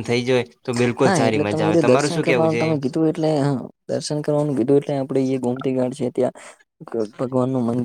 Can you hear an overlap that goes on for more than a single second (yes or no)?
yes